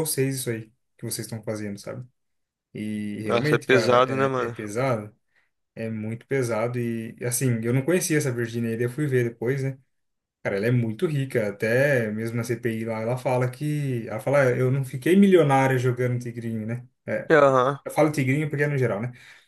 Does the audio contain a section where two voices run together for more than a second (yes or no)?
yes